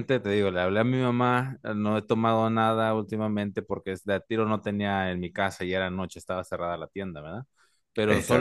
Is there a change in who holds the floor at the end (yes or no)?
no